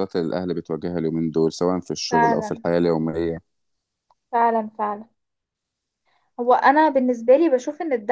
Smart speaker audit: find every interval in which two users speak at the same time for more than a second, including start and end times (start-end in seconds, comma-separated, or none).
none